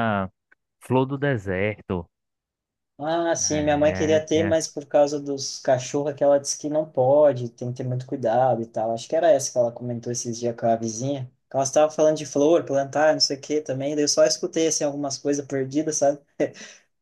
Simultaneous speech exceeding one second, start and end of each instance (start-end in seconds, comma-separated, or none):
3.4-4.7